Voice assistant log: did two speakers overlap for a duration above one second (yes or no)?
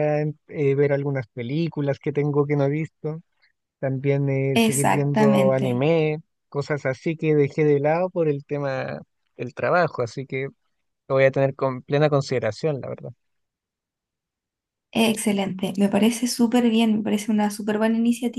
yes